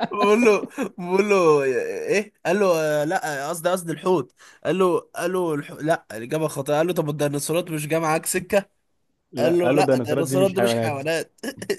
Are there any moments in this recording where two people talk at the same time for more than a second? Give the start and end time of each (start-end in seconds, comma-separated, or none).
9.4-10.9